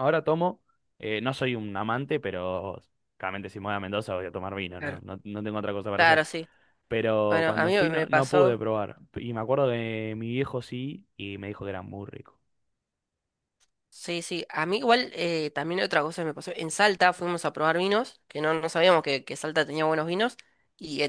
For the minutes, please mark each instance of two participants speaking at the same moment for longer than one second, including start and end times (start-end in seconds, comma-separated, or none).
7.3-8.6